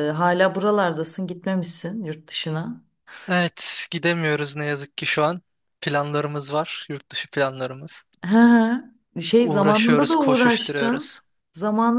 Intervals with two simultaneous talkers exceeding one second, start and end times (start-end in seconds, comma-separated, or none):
9.4-11.1